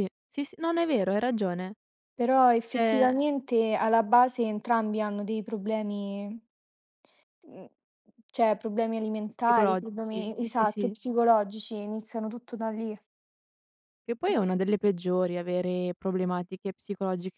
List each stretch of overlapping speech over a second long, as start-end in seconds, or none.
9.4-10.9